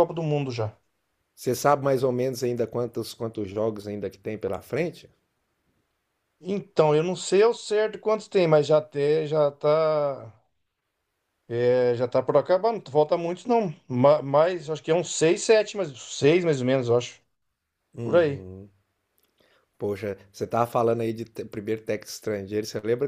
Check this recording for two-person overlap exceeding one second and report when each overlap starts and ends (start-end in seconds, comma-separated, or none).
none